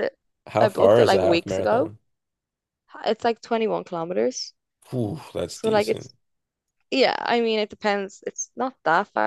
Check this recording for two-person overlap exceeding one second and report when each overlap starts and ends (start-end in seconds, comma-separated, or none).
0.6-1.9